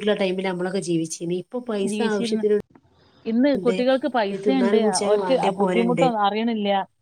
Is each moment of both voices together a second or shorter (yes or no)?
no